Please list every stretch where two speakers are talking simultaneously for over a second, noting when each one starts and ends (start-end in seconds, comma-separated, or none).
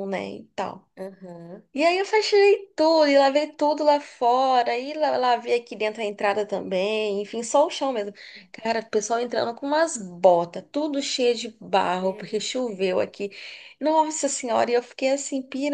12.0-13.2